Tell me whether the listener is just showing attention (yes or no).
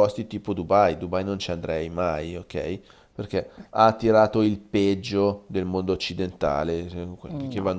yes